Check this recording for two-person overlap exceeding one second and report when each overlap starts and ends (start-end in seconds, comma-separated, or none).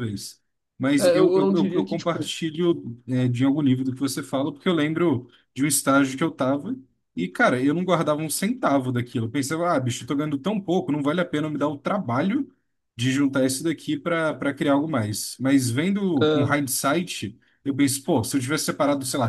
1.0-2.3